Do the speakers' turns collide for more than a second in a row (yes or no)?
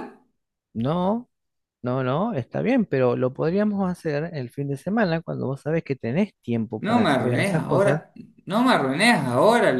yes